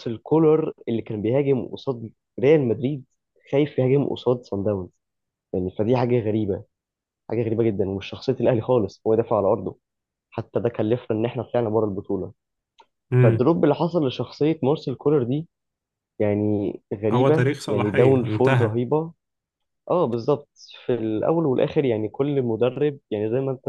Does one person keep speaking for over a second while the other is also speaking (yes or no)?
yes